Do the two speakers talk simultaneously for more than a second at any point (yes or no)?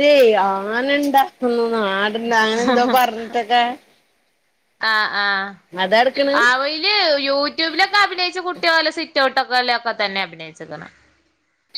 no